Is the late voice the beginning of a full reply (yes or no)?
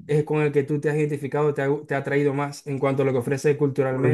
yes